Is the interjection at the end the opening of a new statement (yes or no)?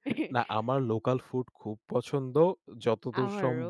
no